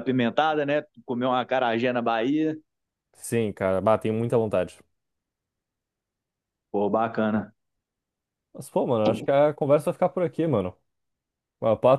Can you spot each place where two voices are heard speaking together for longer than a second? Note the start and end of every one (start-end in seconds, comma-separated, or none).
none